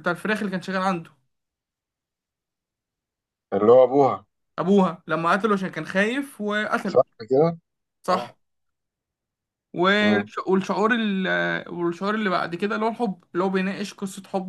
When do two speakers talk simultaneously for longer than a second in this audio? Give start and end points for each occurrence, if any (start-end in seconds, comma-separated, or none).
none